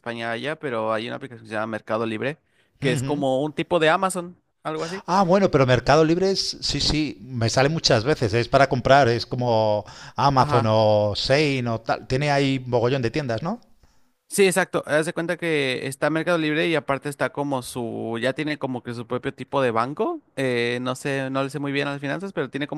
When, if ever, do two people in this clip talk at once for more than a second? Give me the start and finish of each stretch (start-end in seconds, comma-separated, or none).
none